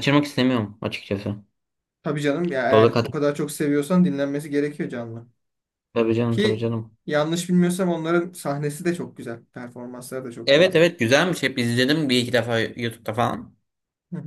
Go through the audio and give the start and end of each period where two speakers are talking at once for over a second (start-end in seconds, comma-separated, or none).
none